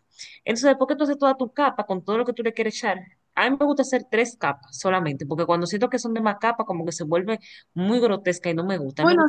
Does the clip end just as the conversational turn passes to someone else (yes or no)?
yes